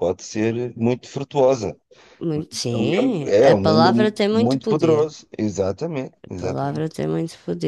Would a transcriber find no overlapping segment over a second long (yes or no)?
no